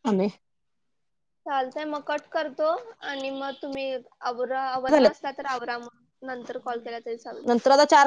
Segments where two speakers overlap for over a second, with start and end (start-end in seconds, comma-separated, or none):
6.3-7.5